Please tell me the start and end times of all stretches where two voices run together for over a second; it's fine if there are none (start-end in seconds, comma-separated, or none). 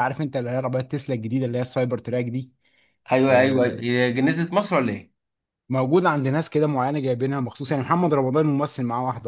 none